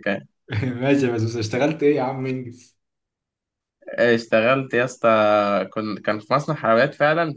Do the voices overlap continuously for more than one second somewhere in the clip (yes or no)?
no